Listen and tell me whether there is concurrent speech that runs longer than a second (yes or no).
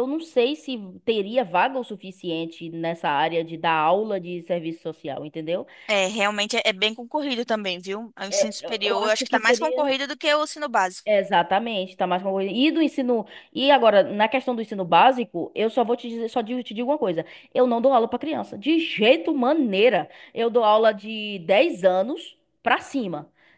yes